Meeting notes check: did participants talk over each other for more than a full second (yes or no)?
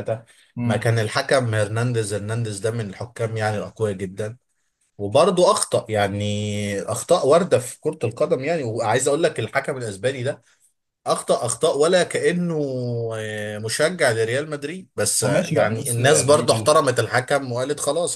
yes